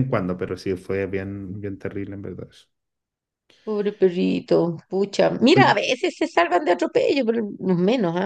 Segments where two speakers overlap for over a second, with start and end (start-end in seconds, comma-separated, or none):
none